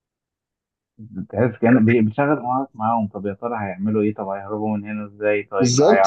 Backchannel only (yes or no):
no